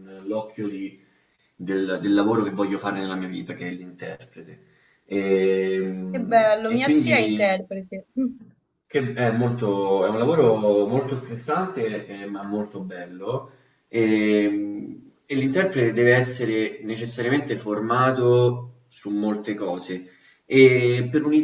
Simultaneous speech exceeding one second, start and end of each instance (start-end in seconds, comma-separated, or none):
6.1-7.6